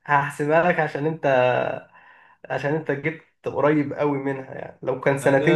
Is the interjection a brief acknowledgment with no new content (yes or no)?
no